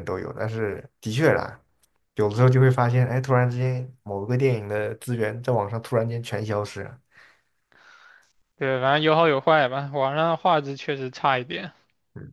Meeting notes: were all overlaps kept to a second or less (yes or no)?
yes